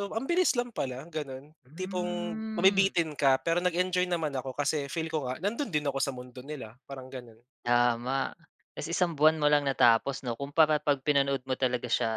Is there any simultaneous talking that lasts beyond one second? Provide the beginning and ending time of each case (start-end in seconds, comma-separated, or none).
1.6-2.9